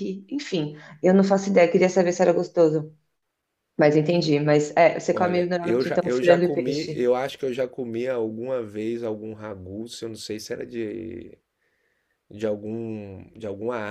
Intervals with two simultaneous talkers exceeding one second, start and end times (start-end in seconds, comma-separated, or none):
5.1-7.1